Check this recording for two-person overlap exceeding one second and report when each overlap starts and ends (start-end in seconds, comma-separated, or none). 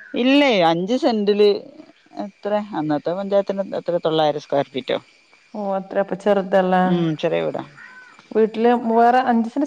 none